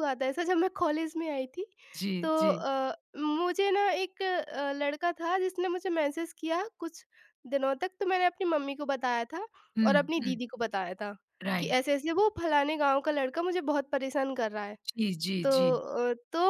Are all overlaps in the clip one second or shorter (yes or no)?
yes